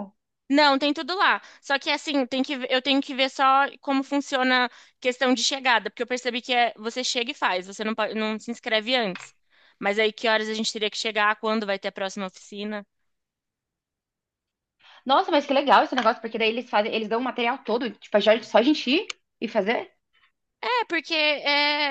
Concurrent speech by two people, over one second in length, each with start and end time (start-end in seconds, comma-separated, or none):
none